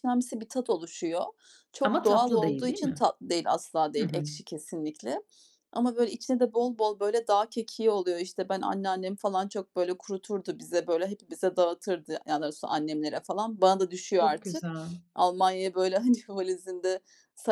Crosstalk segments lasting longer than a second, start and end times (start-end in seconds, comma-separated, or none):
1.8-3.0